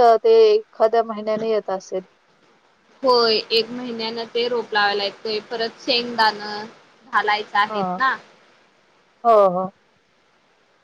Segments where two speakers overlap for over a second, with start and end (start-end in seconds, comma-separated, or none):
none